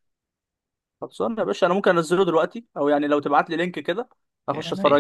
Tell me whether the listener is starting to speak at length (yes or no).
yes